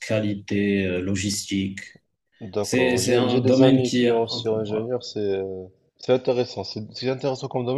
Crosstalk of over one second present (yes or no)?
yes